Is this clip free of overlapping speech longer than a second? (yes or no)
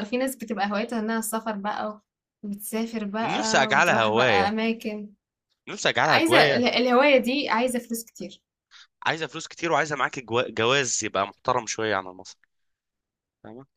no